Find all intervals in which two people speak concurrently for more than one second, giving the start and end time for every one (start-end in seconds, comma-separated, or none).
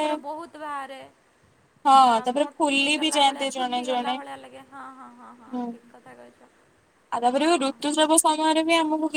1.9-4.1